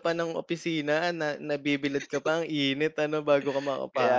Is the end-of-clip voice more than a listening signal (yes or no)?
no